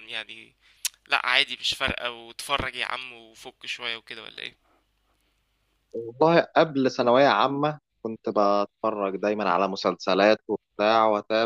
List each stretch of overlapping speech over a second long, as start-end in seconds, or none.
none